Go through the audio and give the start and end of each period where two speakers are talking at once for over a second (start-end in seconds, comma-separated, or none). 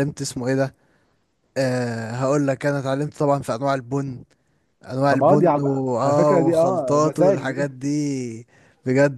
5.1-7.7